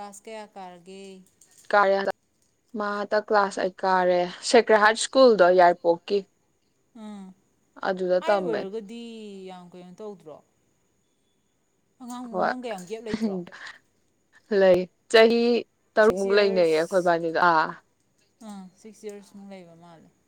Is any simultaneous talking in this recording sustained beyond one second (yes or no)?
yes